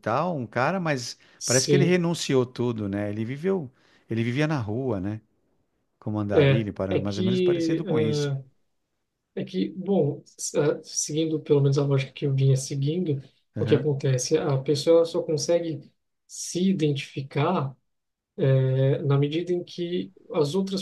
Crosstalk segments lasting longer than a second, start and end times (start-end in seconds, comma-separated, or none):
6.3-8.3